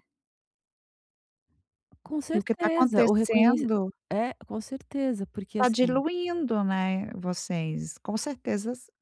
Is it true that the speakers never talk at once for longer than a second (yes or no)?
no